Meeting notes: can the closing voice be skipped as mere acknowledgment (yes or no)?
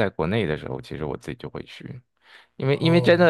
yes